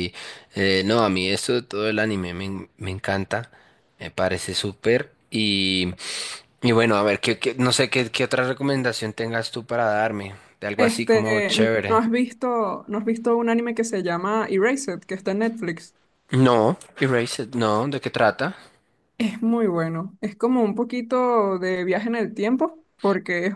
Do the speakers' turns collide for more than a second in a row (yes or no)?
yes